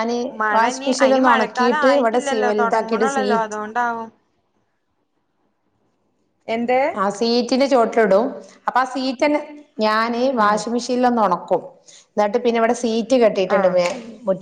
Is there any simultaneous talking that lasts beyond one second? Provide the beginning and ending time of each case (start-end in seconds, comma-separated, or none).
0.6-3.2